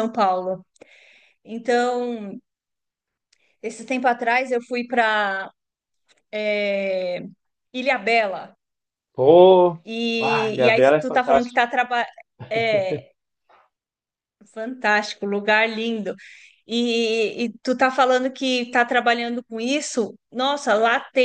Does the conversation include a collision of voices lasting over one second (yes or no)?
yes